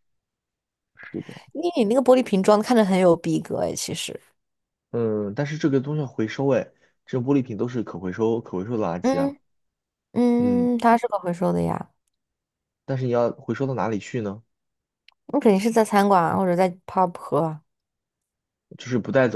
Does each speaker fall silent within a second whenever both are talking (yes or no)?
yes